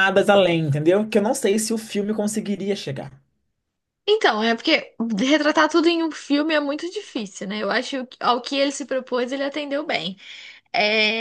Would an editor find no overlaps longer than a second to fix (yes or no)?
yes